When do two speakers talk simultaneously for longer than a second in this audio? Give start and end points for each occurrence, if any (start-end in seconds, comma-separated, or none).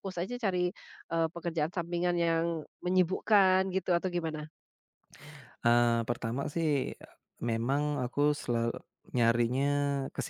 none